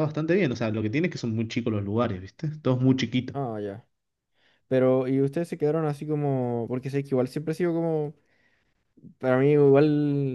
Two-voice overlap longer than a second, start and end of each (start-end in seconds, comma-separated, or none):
none